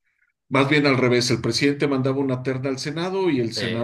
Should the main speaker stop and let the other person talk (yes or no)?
no